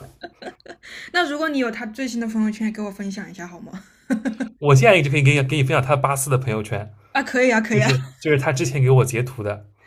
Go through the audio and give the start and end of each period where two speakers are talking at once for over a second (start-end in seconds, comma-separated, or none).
none